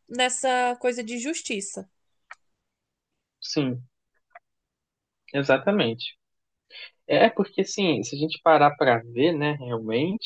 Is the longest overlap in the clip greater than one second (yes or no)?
no